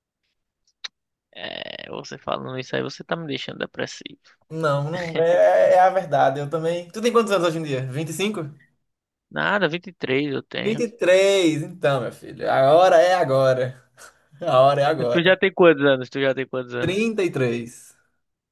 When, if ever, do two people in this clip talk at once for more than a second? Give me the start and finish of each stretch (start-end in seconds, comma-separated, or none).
none